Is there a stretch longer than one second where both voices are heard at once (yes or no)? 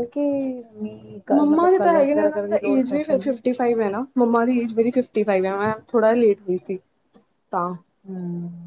yes